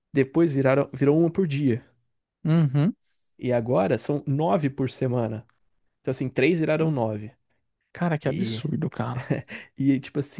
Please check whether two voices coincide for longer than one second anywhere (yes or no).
no